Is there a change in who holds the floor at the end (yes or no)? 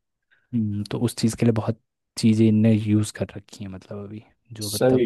yes